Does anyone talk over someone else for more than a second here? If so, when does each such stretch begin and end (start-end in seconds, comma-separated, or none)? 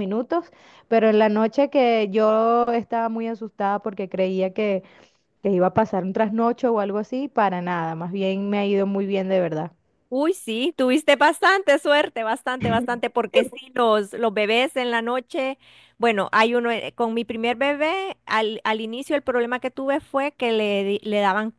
none